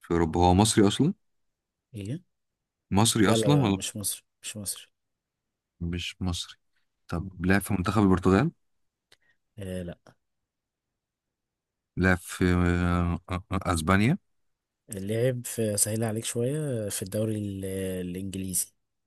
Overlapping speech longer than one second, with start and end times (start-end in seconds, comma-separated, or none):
none